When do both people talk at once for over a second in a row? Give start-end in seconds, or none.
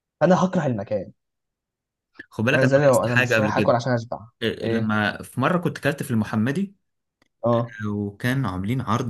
2.5-3.8